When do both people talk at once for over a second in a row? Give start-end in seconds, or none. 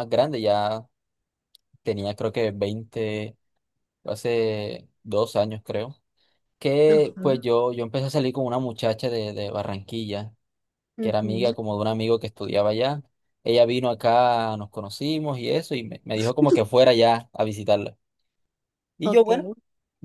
none